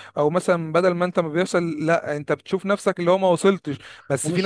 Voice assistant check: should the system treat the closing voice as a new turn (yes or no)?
no